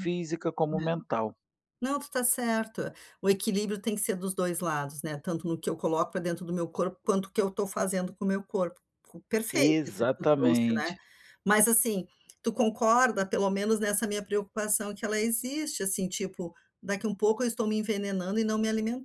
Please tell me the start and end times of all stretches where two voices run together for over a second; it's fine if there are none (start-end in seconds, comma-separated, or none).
9.5-11.0